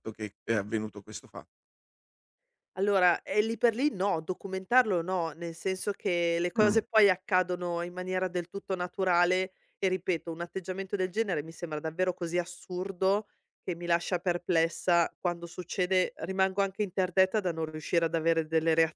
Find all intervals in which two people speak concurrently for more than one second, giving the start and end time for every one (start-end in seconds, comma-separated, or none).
none